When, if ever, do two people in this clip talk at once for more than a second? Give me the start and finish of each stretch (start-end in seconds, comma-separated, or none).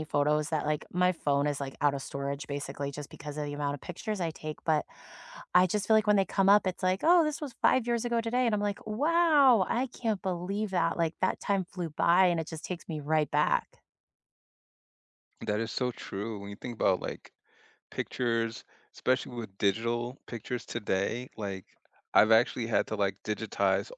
none